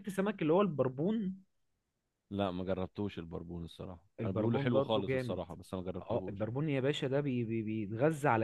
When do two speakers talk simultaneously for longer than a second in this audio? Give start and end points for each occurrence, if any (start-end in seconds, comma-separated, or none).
4.2-5.4